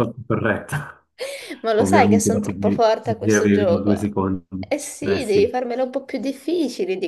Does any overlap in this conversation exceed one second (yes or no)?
yes